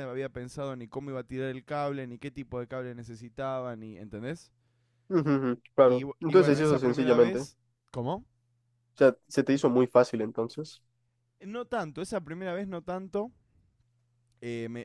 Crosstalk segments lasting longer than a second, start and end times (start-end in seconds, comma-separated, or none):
5.8-7.5